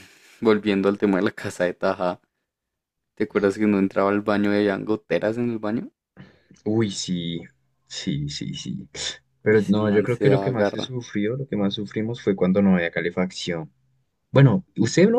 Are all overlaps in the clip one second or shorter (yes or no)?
no